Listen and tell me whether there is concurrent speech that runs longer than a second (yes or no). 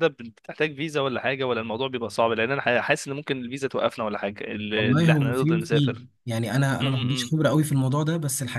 yes